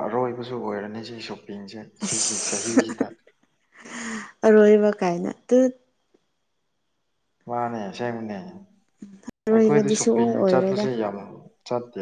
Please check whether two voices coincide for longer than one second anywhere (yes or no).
yes